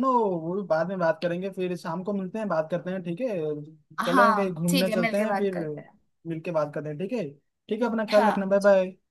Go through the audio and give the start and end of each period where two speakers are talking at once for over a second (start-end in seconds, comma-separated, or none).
4.0-5.5